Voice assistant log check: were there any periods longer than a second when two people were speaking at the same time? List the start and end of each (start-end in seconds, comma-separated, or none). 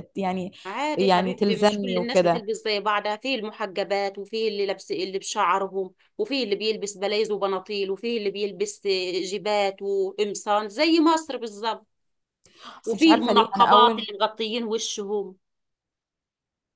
1.0-2.4, 12.8-14.1